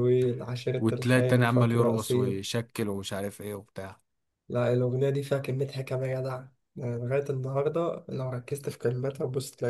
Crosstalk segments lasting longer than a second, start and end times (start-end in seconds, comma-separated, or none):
0.8-2.4